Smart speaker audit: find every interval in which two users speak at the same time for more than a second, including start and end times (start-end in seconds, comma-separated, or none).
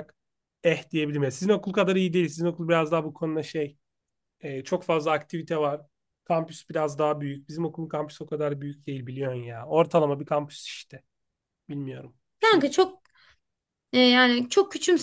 none